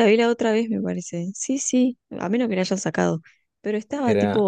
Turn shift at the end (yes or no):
no